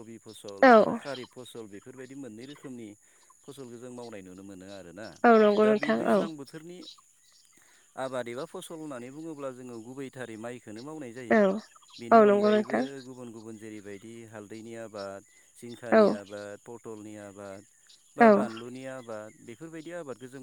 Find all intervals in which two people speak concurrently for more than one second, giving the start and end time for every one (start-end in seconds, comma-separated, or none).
11.3-12.8